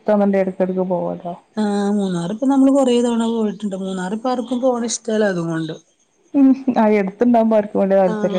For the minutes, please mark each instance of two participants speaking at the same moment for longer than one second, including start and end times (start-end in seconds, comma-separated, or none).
none